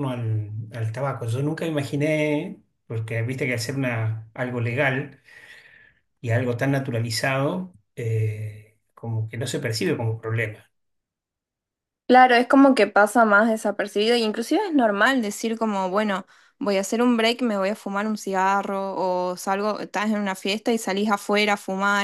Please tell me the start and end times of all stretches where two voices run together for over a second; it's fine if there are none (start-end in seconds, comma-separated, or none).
none